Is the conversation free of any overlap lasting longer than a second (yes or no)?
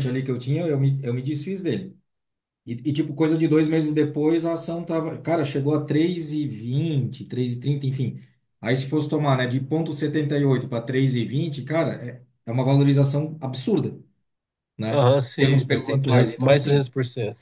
no